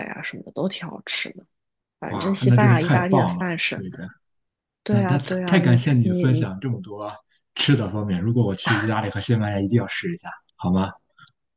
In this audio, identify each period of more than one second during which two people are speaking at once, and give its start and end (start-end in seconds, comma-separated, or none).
2.1-3.9, 4.9-6.5